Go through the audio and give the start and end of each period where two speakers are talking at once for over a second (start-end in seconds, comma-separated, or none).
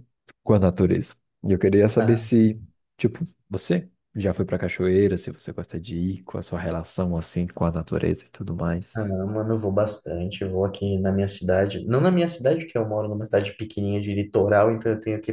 none